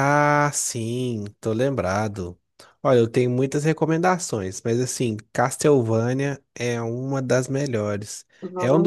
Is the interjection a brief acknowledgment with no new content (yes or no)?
yes